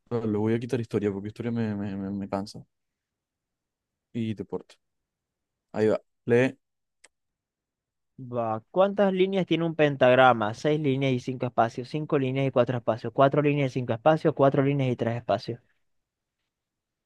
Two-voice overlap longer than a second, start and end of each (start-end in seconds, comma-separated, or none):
none